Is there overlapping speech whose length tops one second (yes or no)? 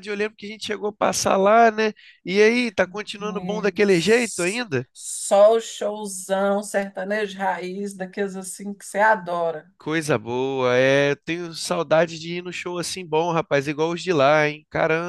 yes